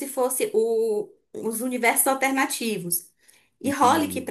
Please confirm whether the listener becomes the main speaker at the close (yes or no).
no